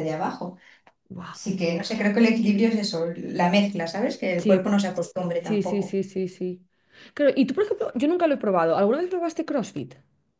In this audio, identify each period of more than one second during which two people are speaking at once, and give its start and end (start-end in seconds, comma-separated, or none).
none